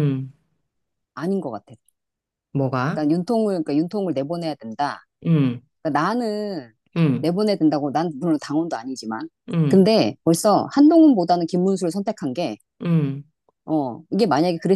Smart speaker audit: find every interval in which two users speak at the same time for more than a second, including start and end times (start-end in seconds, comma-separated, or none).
none